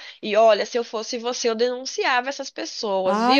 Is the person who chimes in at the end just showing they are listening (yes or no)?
no